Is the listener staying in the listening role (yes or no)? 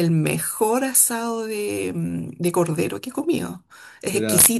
yes